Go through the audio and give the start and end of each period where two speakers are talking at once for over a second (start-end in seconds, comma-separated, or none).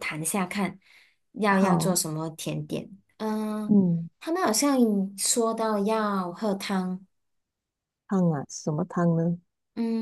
none